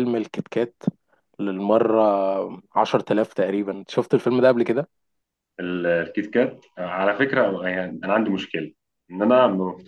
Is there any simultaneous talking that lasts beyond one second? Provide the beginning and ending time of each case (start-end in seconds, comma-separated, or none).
none